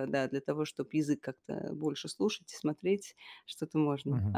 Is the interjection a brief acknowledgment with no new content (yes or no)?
no